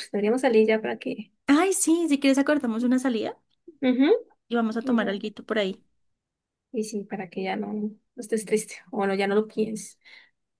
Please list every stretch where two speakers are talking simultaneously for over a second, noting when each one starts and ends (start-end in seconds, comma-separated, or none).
none